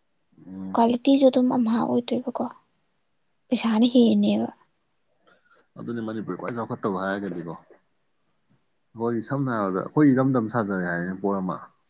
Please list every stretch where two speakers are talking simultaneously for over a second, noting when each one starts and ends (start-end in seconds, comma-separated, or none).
none